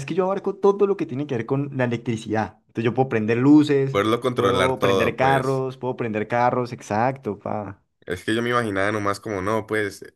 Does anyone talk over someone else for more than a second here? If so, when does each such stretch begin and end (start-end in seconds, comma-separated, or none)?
3.9-5.6